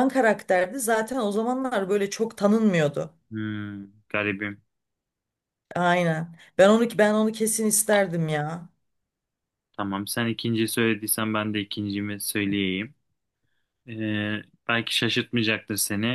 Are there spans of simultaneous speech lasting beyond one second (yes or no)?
no